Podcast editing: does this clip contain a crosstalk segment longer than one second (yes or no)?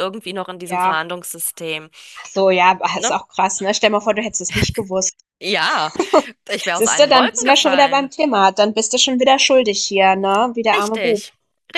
yes